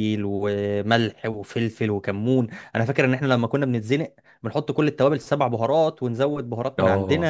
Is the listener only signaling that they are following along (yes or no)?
yes